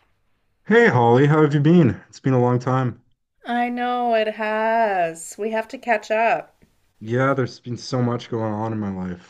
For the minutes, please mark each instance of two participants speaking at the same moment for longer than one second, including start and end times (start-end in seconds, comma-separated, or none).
none